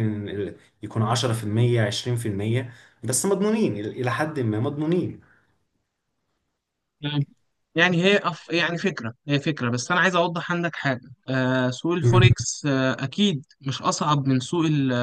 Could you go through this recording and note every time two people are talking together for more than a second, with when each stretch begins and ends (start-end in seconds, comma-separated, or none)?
none